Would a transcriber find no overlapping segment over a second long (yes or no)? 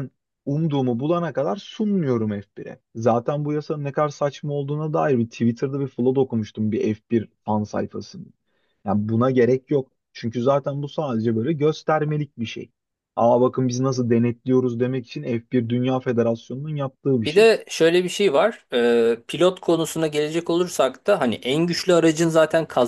yes